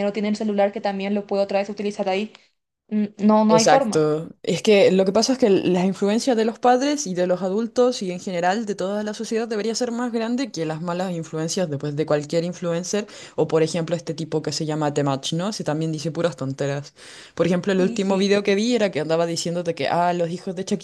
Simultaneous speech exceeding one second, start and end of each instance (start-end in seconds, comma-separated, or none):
none